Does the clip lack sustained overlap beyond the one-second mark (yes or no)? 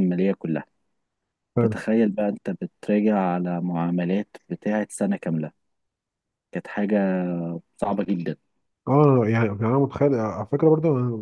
yes